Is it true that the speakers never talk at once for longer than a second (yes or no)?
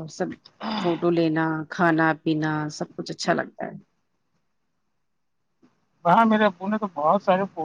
yes